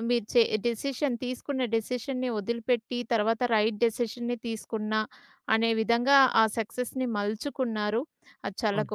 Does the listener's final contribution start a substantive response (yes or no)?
no